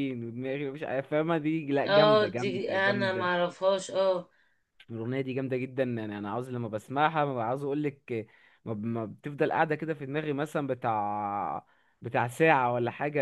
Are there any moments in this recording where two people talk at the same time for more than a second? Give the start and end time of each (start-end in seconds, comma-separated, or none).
1.9-3.5